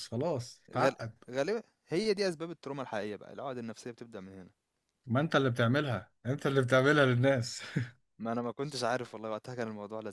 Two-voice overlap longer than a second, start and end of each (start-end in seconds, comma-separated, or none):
none